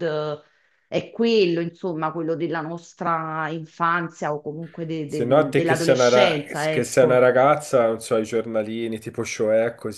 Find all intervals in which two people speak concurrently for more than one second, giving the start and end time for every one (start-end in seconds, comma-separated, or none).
5.0-7.3